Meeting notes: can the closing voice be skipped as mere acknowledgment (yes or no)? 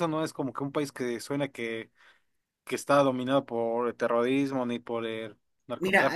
no